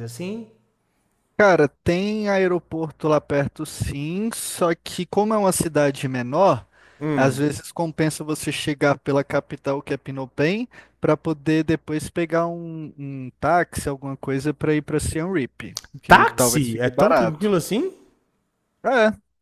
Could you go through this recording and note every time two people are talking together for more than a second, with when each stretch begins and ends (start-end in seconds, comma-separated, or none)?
16.1-17.6